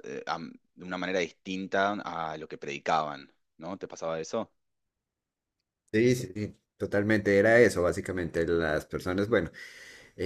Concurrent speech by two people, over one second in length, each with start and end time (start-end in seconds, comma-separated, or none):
none